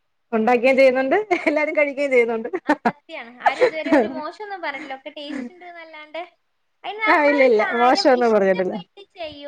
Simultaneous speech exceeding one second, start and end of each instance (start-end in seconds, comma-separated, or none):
7.1-8.8